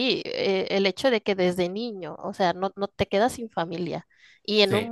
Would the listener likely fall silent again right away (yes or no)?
yes